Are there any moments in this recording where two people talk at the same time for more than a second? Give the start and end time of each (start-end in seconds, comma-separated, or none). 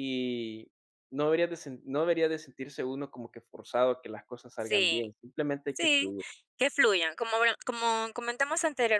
none